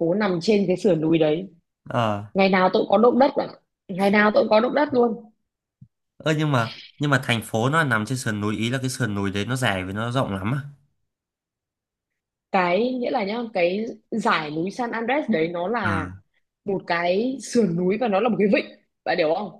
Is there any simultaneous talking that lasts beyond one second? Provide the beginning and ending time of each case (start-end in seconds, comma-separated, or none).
none